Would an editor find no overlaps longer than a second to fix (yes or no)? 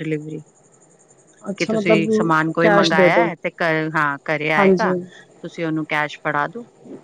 no